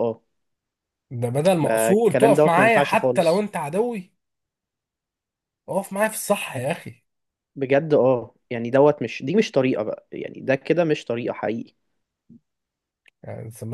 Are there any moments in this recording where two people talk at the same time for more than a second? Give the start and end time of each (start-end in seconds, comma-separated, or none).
1.6-3.4